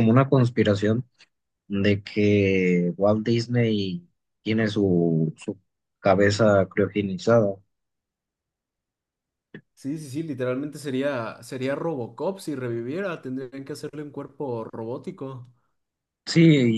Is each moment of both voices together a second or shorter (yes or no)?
yes